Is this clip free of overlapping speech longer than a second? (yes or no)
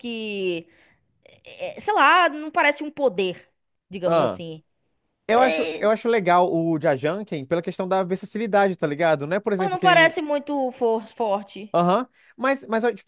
yes